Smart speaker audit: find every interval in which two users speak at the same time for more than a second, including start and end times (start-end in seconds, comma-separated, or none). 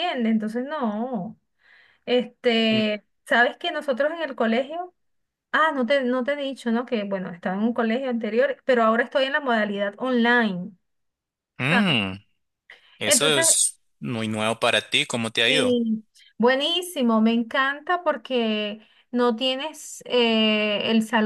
none